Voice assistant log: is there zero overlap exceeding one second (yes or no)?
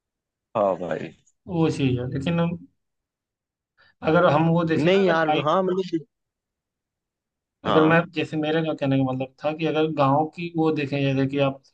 yes